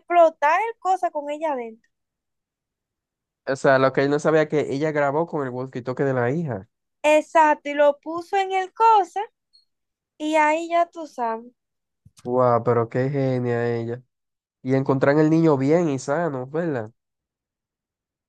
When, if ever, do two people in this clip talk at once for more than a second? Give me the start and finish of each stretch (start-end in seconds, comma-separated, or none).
none